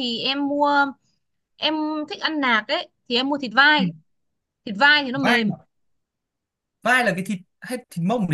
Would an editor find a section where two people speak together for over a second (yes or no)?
no